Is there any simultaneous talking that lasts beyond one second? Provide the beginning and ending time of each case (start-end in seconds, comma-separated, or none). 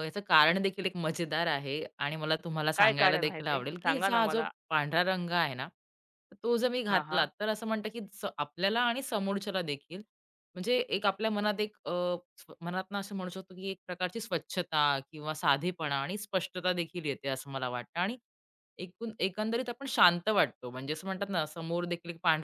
2.8-4.5